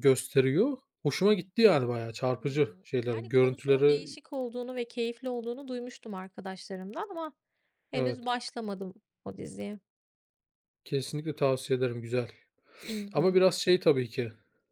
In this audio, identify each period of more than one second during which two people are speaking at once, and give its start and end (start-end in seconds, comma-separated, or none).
2.4-4.2